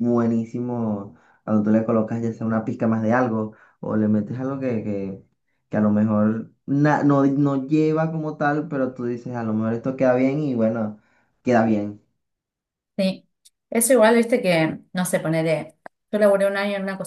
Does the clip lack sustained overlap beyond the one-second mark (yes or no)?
yes